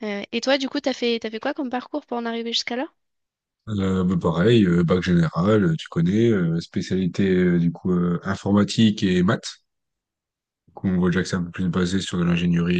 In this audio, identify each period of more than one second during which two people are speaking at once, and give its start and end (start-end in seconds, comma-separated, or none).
none